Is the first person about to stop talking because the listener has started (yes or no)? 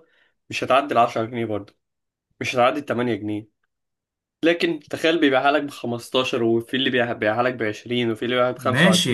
yes